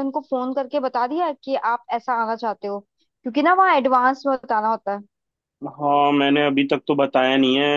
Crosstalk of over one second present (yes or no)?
no